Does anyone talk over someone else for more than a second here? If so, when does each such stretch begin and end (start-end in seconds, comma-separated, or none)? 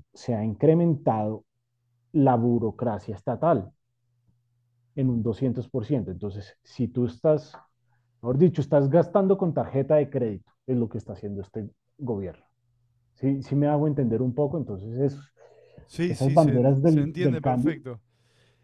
16.1-17.7